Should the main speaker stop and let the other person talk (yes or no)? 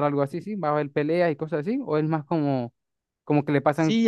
yes